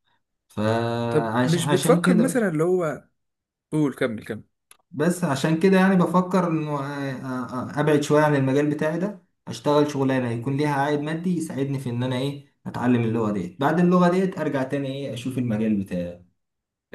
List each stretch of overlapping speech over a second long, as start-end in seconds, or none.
1.1-2.5